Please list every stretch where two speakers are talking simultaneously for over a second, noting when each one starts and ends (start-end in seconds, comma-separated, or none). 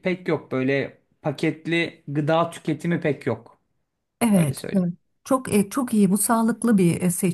none